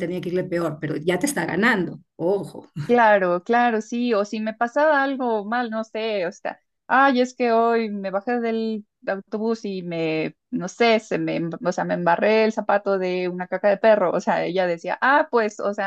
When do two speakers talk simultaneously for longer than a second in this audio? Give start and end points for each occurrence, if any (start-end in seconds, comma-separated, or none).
none